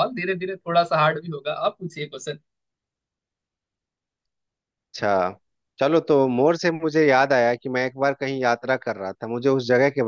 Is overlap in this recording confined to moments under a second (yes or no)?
yes